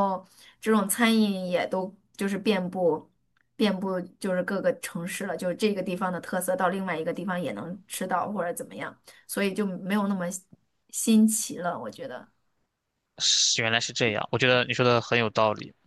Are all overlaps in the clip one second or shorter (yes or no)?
yes